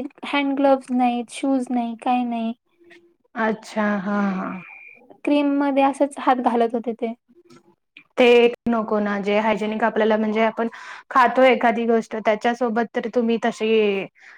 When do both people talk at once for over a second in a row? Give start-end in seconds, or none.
none